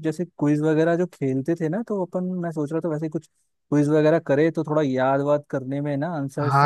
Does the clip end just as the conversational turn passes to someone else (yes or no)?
yes